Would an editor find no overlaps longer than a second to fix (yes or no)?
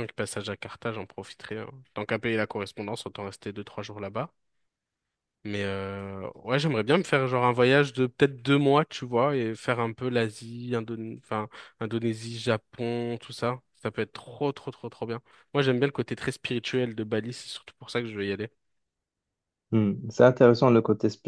yes